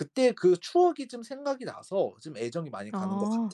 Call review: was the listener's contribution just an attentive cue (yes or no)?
no